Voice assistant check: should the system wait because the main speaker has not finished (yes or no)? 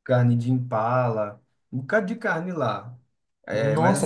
no